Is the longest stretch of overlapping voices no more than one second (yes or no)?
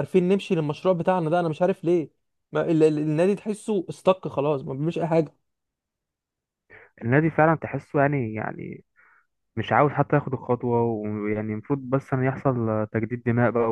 yes